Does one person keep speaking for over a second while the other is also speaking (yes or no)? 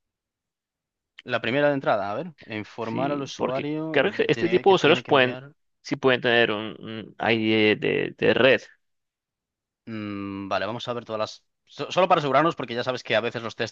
yes